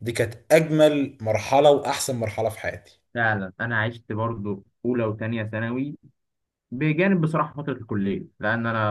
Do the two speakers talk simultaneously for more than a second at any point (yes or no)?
no